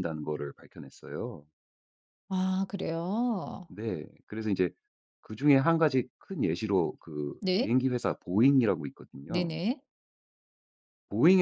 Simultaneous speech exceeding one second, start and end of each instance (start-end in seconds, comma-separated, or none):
none